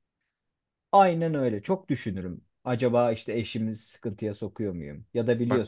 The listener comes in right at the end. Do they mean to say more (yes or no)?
no